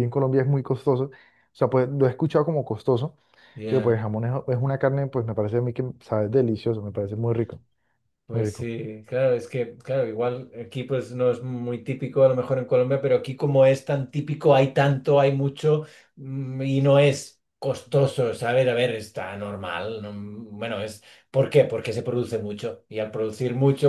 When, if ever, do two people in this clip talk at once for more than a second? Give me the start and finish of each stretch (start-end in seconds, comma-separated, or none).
none